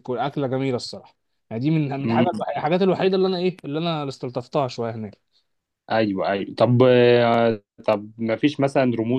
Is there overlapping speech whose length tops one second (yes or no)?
no